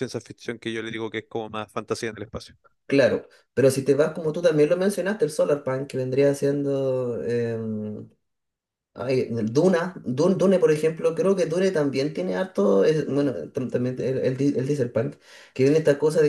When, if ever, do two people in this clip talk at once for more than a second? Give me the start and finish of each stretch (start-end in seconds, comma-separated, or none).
none